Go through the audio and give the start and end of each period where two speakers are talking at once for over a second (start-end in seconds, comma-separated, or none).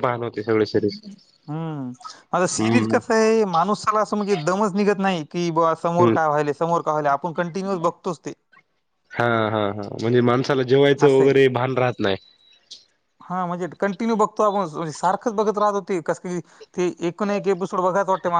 none